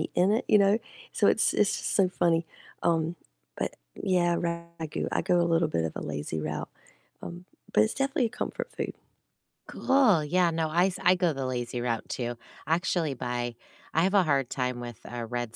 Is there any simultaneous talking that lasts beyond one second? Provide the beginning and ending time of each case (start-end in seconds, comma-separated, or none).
none